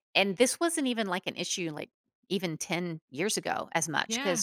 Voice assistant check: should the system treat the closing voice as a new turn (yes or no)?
no